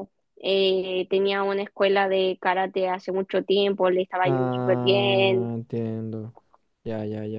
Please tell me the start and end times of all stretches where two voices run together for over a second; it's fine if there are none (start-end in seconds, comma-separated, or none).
4.2-5.5